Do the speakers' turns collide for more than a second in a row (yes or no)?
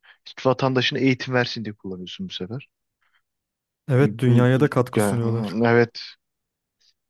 yes